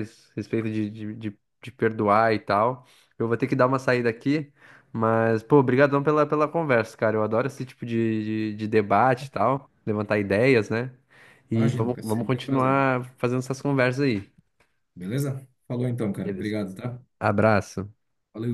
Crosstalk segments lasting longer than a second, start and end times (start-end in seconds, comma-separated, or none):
11.5-12.8